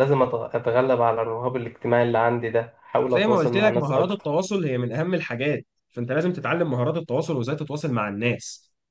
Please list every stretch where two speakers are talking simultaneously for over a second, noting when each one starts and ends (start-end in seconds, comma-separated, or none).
3.0-4.3